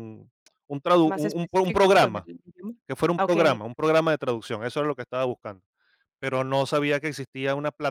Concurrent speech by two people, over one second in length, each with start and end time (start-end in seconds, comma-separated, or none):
1.1-2.3